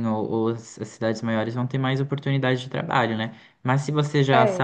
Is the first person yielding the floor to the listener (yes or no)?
no